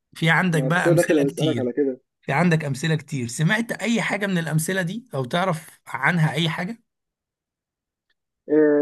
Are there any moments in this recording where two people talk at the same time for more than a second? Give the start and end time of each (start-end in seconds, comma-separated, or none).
0.5-1.7